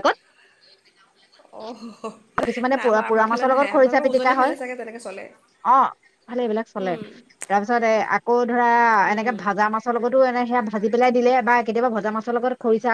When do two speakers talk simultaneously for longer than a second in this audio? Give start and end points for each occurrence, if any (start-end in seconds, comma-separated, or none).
2.8-4.5